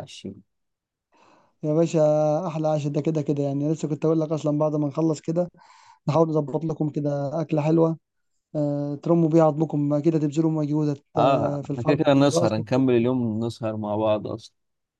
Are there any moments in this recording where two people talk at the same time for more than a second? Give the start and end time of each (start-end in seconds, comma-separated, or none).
11.2-12.5